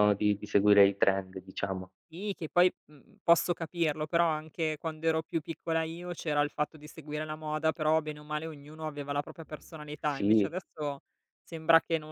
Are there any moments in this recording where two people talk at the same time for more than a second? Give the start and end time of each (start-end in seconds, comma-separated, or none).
none